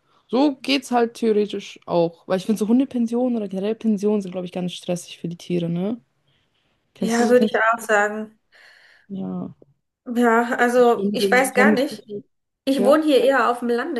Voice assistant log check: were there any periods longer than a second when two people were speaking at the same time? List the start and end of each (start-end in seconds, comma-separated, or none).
10.7-12.0